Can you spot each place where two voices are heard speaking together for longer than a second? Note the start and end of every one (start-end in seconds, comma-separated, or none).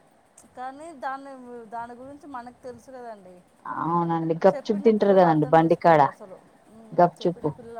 4.5-6.0